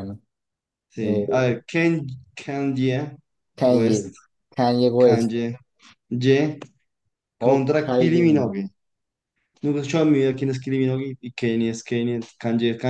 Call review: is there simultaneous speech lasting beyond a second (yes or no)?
yes